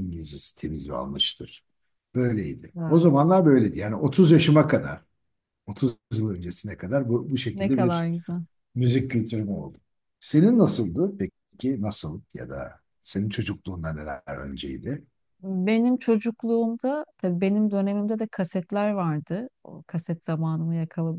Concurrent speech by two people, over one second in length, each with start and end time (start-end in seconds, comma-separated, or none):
none